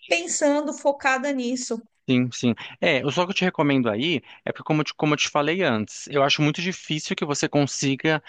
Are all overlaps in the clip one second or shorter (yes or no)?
yes